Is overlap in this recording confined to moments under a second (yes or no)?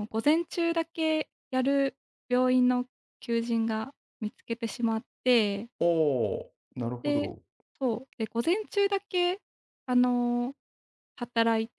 yes